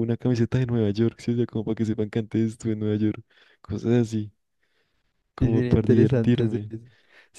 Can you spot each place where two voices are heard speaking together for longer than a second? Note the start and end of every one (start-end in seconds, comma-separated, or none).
5.4-6.7